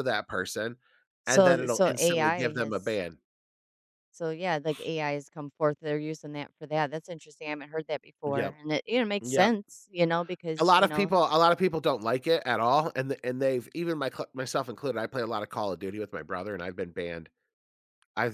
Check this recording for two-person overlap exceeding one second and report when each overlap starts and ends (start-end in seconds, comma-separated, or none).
1.3-3.0